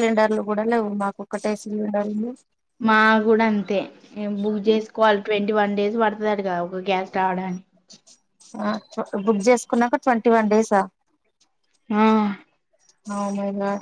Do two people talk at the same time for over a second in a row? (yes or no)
no